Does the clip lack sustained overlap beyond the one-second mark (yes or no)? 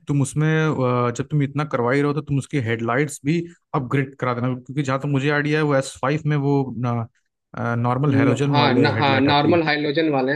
no